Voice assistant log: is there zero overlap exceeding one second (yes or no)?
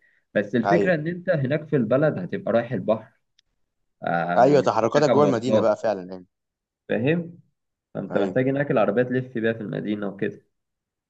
no